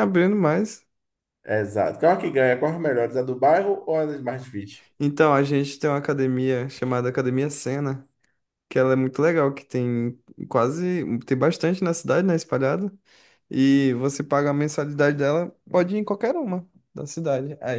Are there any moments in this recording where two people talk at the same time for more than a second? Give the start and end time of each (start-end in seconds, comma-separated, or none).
none